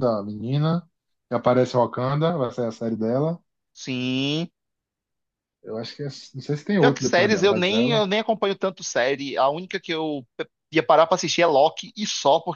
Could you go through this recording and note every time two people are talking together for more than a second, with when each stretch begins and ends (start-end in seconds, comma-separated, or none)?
6.8-8.0